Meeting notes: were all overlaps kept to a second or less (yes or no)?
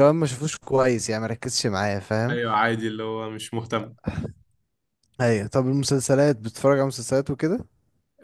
yes